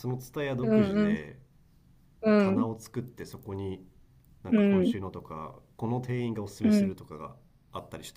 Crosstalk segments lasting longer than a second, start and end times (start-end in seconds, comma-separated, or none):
none